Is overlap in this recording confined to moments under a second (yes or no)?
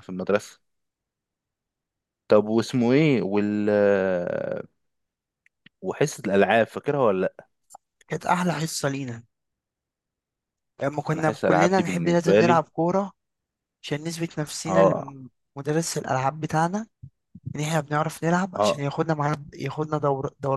no